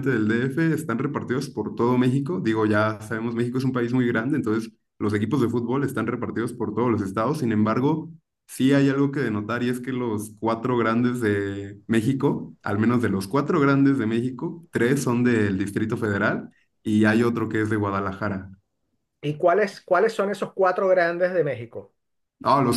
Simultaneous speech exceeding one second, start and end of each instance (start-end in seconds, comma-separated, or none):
none